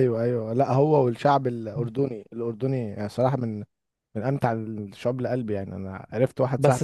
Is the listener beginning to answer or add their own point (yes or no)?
yes